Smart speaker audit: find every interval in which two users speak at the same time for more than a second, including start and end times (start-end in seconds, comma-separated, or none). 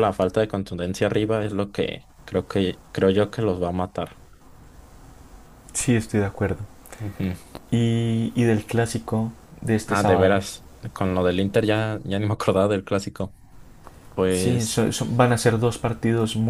none